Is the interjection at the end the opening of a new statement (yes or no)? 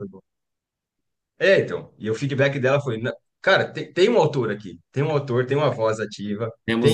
no